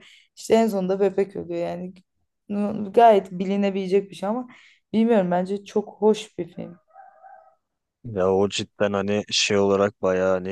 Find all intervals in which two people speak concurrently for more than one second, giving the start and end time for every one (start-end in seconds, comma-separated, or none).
none